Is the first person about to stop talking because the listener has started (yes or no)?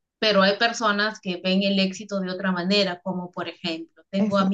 no